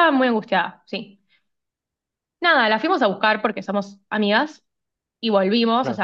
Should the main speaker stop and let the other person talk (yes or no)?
no